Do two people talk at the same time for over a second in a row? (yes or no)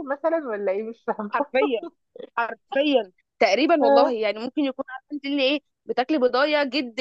no